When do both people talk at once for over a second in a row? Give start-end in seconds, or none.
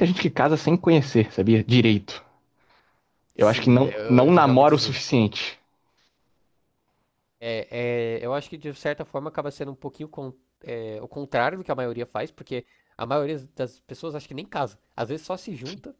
3.4-5.0